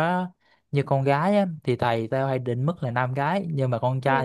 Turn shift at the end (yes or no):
no